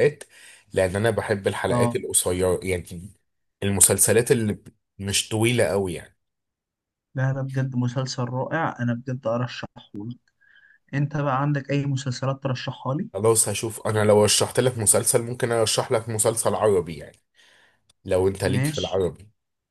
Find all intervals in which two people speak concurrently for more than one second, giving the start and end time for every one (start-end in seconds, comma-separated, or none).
none